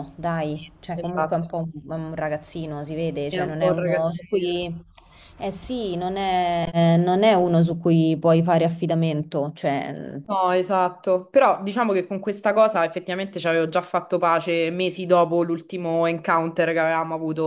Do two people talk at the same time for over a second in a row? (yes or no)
yes